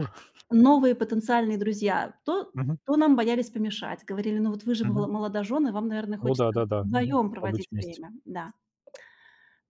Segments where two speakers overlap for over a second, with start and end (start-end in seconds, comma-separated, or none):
6.2-8.0